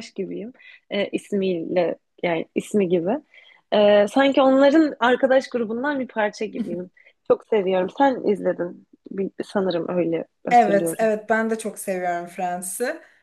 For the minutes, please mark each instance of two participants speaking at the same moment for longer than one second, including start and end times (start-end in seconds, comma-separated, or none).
none